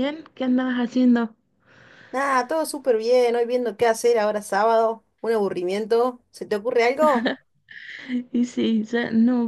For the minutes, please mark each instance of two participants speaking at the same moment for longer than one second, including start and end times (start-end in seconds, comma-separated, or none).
none